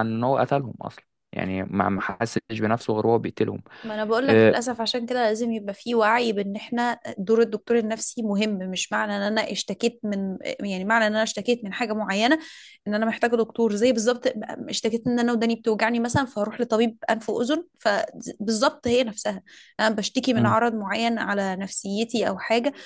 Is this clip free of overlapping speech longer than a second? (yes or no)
yes